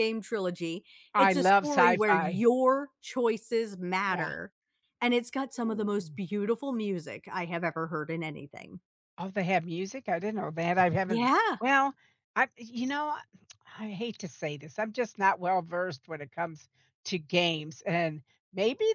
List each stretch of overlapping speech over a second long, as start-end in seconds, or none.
1.1-2.5